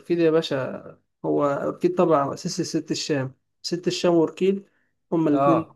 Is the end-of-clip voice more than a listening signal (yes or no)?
no